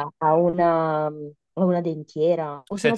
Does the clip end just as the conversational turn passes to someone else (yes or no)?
yes